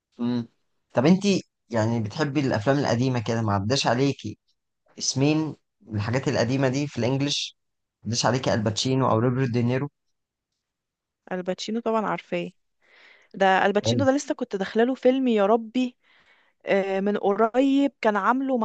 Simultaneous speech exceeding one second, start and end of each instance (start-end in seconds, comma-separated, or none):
none